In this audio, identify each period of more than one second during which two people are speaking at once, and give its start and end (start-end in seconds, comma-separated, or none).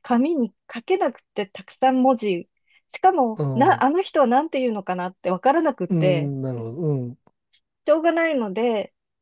none